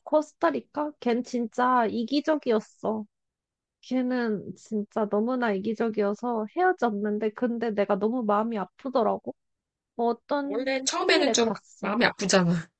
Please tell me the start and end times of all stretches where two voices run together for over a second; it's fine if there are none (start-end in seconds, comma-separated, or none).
10.4-11.9